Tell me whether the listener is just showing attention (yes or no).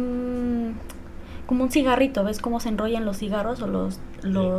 yes